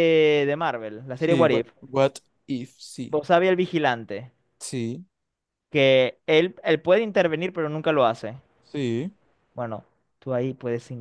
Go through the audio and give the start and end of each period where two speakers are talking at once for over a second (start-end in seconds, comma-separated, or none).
none